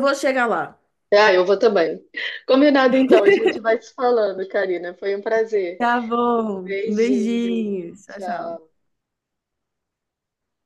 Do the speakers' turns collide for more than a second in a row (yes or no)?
yes